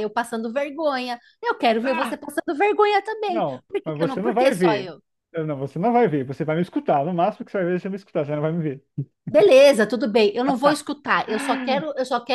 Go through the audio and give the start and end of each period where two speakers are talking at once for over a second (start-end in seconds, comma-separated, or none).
3.3-4.9